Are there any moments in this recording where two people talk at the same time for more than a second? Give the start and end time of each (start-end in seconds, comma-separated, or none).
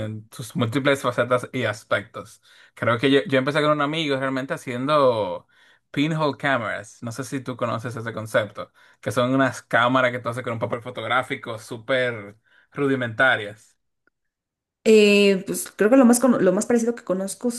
none